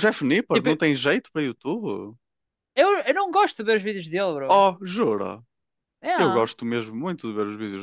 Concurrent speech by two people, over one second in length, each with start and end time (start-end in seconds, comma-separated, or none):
none